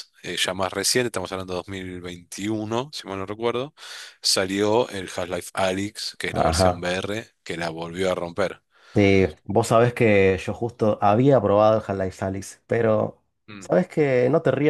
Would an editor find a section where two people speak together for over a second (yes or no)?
no